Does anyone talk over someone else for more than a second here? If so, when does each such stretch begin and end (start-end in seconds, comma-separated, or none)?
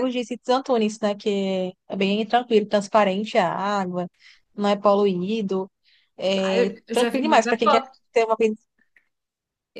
6.4-8.0